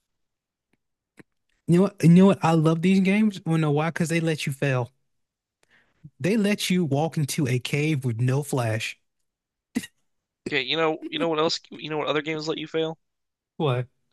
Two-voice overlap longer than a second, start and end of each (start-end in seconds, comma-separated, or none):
none